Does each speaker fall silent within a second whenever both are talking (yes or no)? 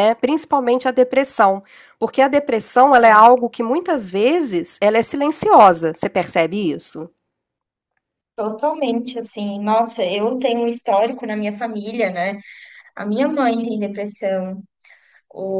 yes